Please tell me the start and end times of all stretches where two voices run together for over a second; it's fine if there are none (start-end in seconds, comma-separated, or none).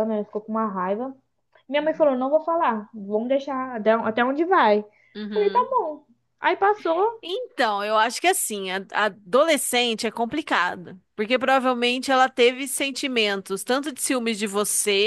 none